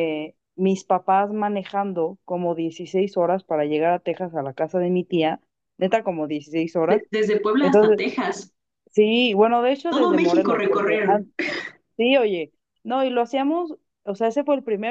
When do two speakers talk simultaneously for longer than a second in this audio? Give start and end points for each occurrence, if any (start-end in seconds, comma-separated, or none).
9.9-11.2